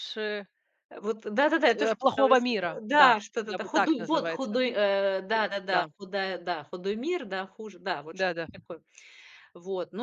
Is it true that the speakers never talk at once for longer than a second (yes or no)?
no